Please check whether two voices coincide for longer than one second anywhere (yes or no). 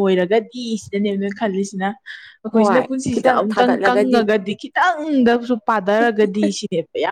yes